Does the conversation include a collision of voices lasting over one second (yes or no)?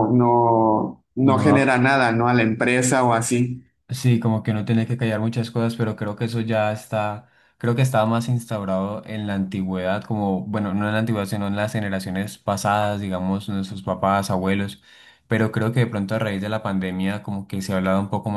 no